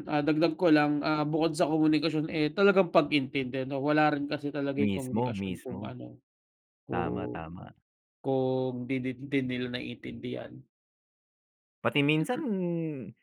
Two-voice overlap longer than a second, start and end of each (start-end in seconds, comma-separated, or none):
4.8-6.0